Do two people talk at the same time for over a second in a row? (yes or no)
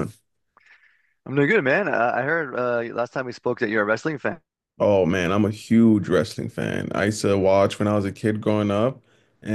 no